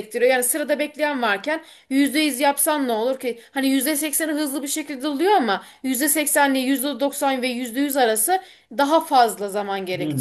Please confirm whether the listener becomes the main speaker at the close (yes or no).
yes